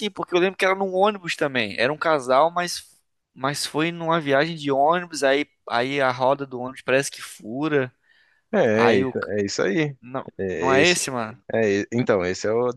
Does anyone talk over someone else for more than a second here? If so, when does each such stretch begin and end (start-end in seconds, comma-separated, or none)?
none